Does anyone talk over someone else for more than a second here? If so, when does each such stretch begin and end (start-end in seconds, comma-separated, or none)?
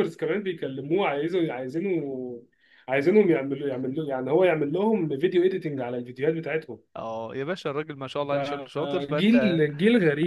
8.3-9.6